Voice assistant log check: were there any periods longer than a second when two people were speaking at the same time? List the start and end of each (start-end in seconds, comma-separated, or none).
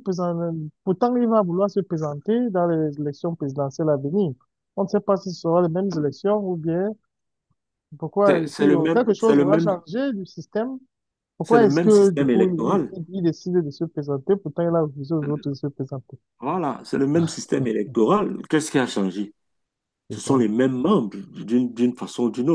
8.2-9.7, 11.4-12.9